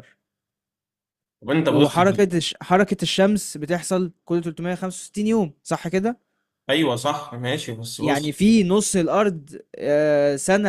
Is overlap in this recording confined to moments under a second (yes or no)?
yes